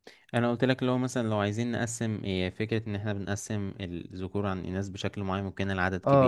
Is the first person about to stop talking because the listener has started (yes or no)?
yes